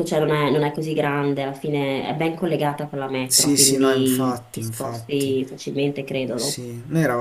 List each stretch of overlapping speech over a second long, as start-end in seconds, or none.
3.3-5.3